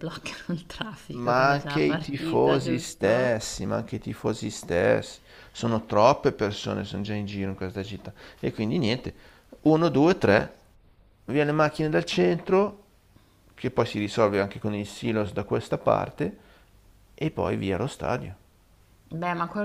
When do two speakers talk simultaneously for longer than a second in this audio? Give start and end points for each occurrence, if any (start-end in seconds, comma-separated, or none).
1.1-3.5